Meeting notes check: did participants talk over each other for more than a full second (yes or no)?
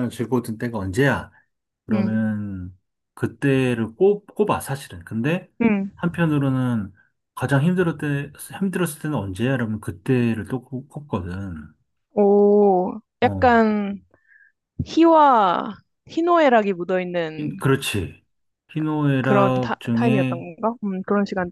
yes